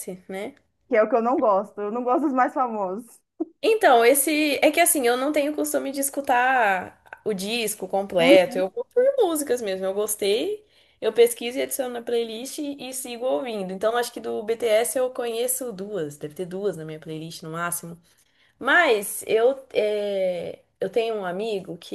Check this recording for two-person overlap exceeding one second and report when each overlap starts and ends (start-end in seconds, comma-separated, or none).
none